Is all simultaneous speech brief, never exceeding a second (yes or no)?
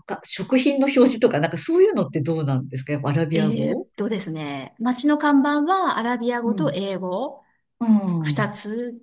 yes